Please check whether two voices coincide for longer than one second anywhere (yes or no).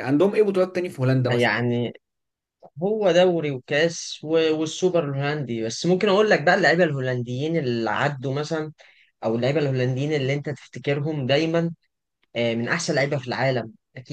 no